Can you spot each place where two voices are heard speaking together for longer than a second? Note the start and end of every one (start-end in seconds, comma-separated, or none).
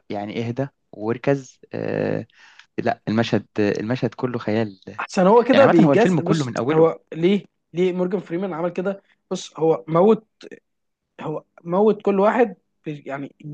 5.5-6.9